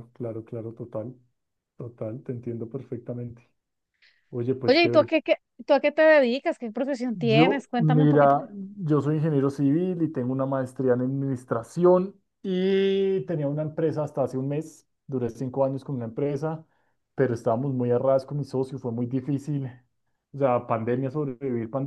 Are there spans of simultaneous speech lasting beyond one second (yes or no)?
yes